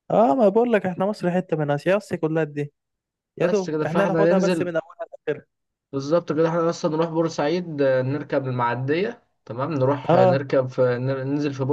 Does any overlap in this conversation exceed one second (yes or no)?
yes